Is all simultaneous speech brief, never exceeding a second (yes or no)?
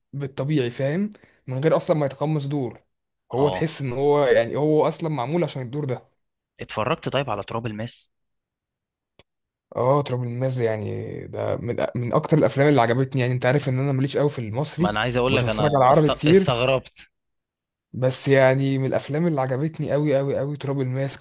no